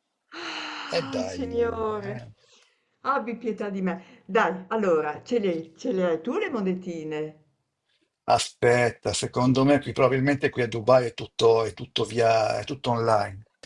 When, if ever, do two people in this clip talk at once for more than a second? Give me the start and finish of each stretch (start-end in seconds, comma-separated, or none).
none